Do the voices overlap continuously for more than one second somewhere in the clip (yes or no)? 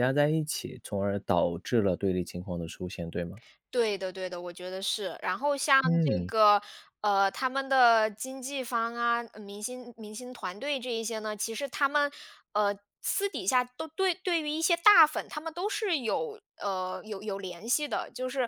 no